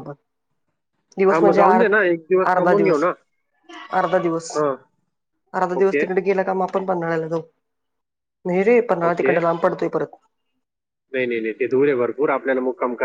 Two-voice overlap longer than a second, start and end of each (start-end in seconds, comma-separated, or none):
none